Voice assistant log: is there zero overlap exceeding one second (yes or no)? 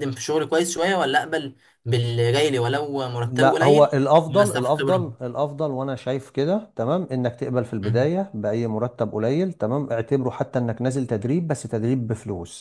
no